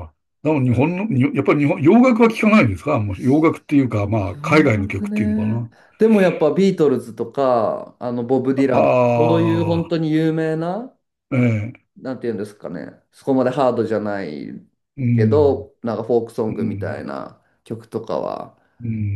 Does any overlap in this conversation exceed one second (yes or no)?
yes